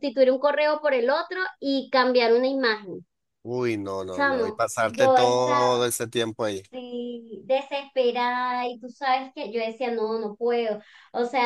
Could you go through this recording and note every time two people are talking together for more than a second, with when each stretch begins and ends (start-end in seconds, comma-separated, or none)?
4.1-5.8